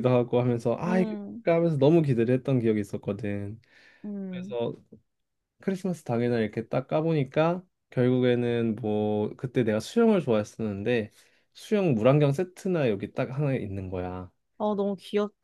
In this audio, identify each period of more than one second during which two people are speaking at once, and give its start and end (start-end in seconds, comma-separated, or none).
none